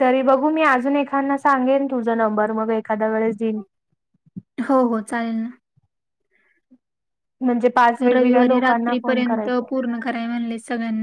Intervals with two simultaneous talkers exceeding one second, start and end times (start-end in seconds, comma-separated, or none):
8.1-9.7